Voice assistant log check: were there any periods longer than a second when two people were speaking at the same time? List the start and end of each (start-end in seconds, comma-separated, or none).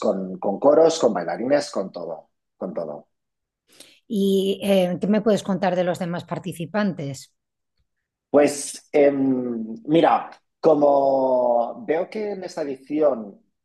none